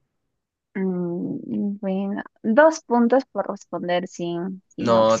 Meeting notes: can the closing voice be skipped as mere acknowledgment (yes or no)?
no